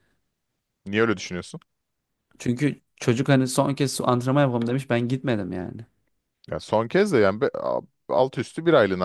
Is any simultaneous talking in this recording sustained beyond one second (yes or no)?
no